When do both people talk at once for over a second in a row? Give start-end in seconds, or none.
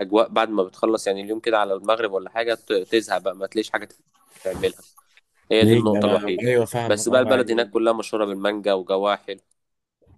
5.6-7.7